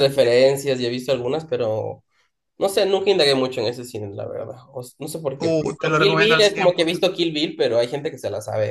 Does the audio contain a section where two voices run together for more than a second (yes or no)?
yes